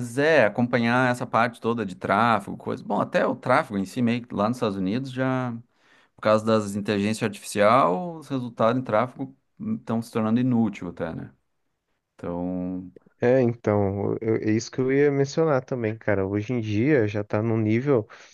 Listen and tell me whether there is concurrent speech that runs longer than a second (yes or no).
no